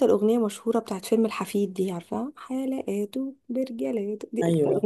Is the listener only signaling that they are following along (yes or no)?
yes